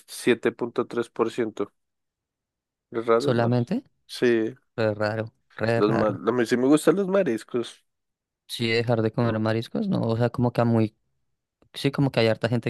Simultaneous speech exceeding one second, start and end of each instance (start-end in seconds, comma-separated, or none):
none